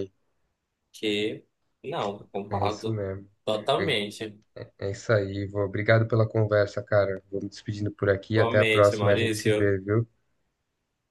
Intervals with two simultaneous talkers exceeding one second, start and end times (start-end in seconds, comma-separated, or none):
8.3-9.7